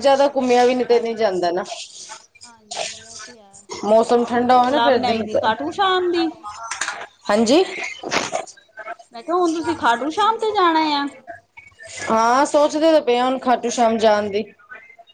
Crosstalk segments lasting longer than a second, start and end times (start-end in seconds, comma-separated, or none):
3.9-5.2